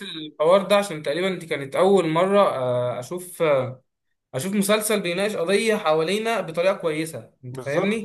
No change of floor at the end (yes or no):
no